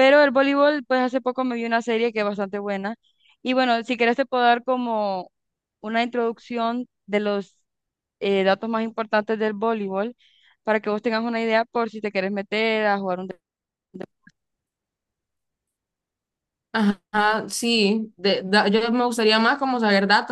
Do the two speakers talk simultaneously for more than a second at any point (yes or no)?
no